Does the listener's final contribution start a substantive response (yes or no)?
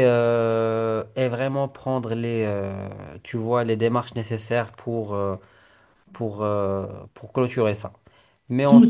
yes